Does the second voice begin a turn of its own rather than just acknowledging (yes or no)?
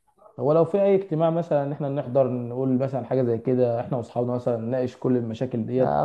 yes